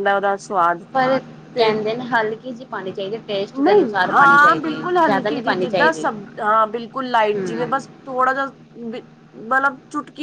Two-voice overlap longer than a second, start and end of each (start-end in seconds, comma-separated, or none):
3.6-6.1